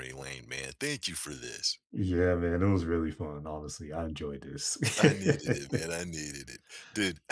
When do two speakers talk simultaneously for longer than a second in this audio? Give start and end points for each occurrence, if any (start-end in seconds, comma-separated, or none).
none